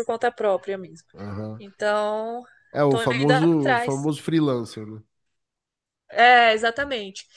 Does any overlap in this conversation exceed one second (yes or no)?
yes